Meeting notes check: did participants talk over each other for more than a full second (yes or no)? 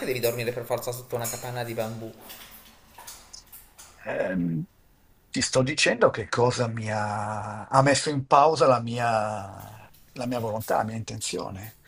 no